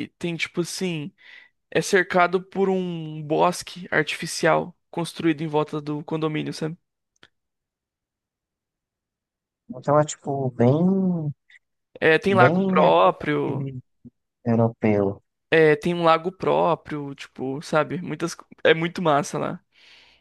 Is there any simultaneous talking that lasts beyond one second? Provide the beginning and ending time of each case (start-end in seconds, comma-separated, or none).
12.3-13.7